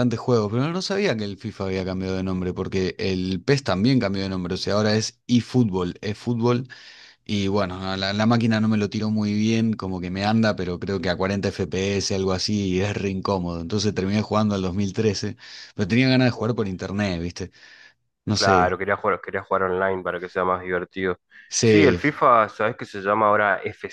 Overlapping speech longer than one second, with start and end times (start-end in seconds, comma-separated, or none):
none